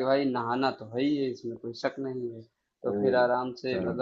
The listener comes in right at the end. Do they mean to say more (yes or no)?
no